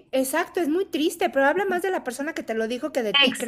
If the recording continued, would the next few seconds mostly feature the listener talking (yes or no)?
yes